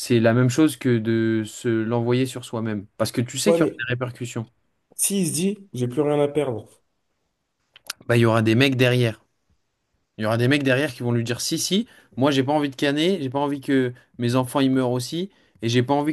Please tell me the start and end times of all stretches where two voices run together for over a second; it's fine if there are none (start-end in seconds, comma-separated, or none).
none